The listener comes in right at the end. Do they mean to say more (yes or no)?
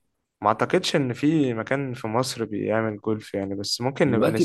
yes